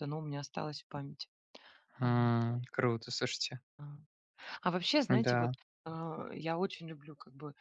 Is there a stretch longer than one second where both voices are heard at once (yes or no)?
no